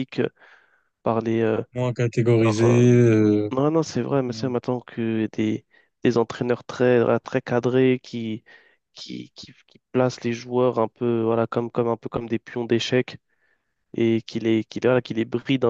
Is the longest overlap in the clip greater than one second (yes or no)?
no